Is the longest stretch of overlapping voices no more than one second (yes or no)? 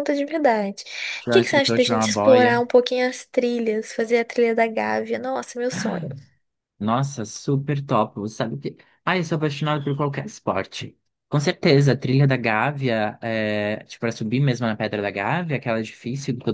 no